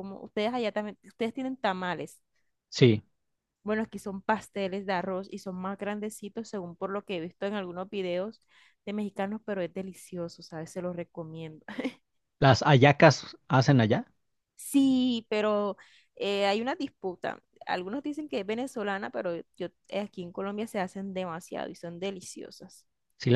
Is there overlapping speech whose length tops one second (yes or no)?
no